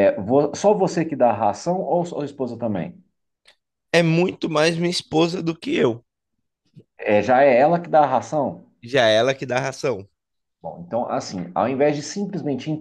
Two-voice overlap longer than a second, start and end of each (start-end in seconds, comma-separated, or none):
none